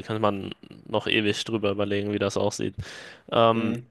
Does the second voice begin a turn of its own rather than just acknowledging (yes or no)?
no